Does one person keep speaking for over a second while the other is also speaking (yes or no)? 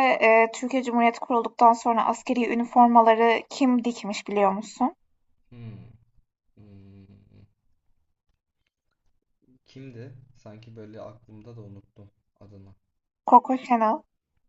no